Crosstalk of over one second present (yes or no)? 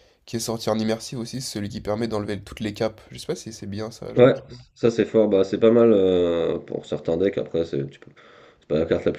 no